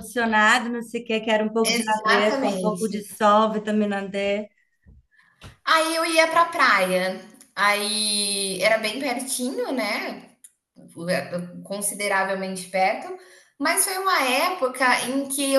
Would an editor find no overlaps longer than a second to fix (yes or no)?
no